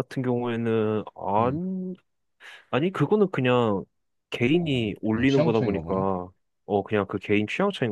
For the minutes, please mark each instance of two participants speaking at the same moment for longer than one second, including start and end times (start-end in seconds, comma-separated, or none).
4.5-6.0